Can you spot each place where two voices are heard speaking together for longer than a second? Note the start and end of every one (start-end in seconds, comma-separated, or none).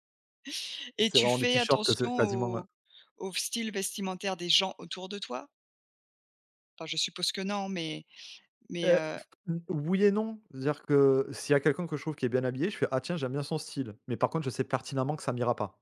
1.0-2.6